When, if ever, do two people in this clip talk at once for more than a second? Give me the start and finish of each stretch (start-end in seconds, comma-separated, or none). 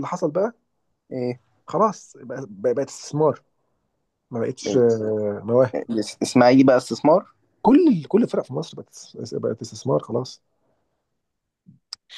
none